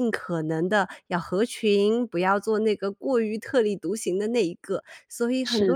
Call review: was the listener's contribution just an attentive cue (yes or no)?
no